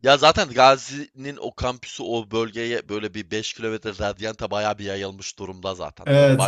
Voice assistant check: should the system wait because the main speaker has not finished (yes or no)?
yes